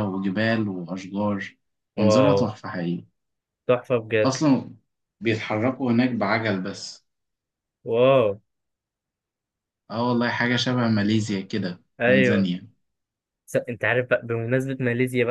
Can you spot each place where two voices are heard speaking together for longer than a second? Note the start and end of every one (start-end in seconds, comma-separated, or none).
none